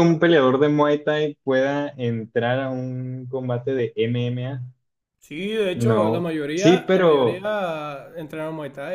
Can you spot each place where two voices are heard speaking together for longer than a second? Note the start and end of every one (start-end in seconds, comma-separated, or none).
5.7-7.5